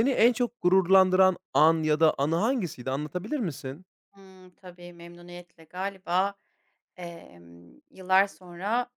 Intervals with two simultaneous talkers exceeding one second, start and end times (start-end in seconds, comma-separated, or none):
none